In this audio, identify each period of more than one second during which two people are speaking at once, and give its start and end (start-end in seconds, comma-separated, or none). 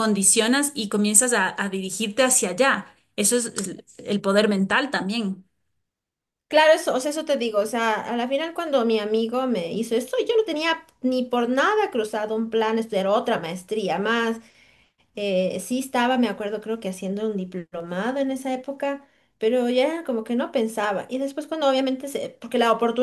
none